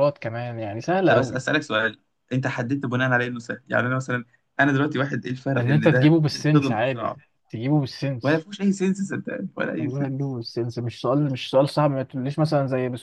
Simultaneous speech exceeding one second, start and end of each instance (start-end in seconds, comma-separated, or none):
5.6-7.2